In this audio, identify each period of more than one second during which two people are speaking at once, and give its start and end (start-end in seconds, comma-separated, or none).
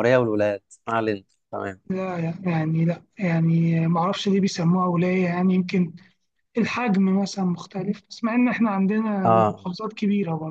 none